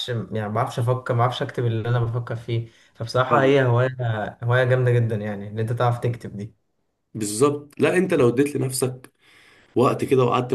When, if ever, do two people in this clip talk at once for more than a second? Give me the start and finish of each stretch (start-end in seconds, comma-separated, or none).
none